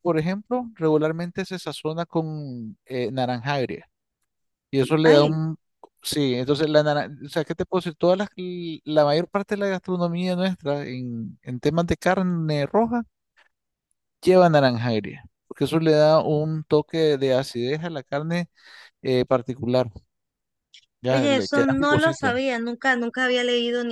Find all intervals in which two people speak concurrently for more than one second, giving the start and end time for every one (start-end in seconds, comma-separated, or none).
21.1-22.4